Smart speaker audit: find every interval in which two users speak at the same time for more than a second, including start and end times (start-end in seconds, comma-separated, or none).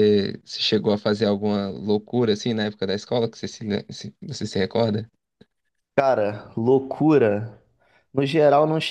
none